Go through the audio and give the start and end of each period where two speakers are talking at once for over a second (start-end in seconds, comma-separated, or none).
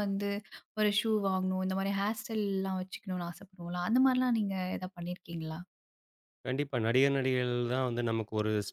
none